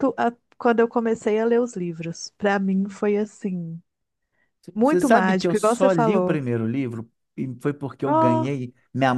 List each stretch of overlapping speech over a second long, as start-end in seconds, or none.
4.8-6.4